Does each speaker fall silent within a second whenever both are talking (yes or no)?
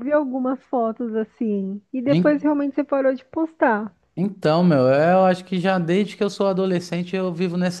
yes